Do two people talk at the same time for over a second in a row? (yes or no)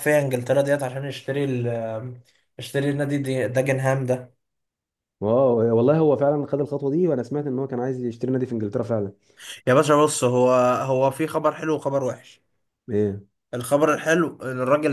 no